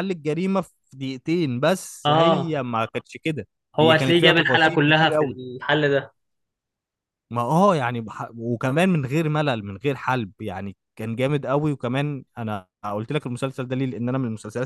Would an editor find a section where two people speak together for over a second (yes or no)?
yes